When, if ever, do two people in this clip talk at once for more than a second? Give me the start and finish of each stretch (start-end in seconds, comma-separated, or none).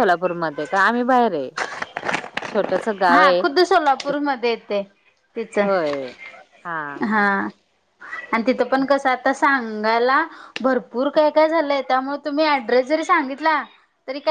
none